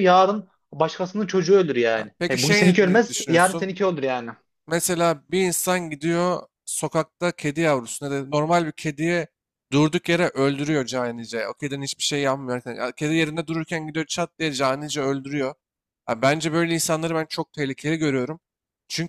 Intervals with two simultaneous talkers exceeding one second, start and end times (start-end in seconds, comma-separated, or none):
1.9-3.7